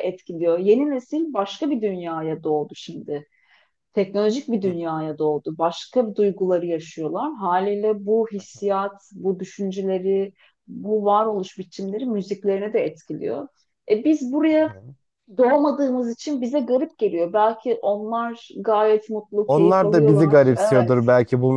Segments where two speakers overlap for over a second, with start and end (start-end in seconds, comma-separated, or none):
19.4-21.0